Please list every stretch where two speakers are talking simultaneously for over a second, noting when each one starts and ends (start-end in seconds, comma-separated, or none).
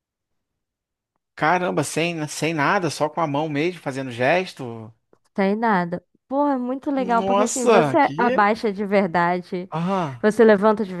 7.0-8.5